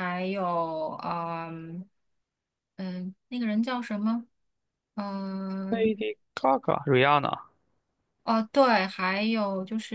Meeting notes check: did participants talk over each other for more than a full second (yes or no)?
no